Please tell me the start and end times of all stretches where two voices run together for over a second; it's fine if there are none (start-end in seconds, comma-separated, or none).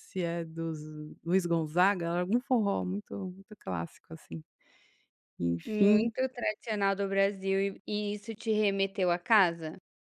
none